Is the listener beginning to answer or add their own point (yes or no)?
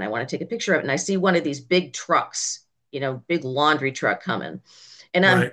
no